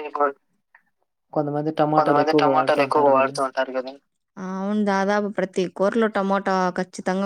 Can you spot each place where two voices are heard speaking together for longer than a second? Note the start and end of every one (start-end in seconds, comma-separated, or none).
2.0-3.4